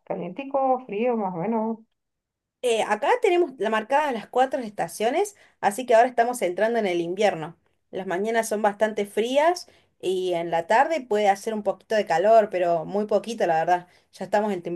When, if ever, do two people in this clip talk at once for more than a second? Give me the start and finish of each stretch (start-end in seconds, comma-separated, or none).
none